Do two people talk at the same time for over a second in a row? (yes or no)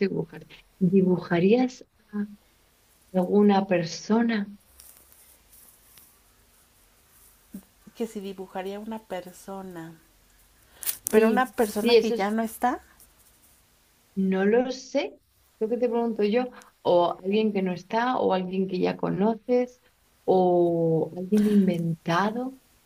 yes